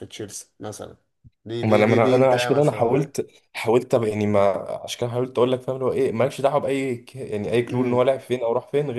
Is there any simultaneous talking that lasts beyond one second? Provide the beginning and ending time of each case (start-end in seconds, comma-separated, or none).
1.6-3.1